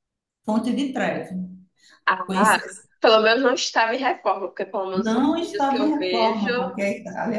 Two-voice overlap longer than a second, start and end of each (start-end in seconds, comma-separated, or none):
4.9-6.5